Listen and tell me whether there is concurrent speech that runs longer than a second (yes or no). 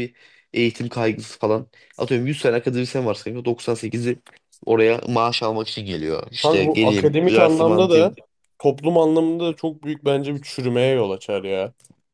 yes